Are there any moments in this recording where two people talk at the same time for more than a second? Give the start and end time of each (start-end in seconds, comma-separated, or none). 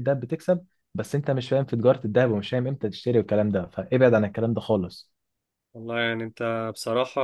none